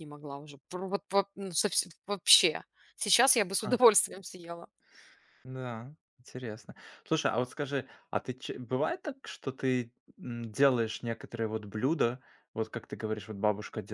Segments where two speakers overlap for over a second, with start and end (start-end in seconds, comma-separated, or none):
none